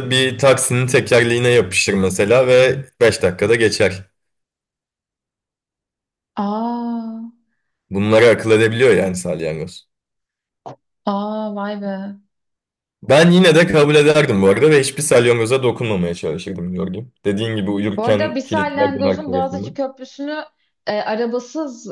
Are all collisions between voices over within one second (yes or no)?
no